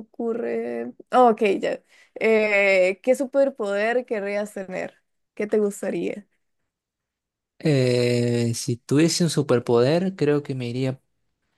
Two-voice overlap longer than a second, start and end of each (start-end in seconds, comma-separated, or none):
none